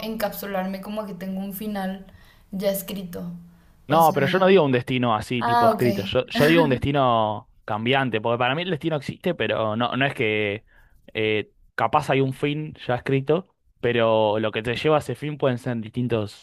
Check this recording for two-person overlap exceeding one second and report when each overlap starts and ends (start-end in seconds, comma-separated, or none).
none